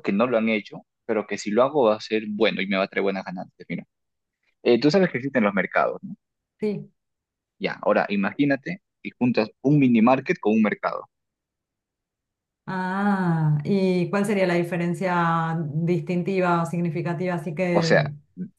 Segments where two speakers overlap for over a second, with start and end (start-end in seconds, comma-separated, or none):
none